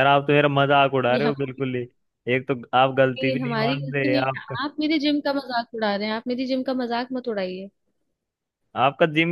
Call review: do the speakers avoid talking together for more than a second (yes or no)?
no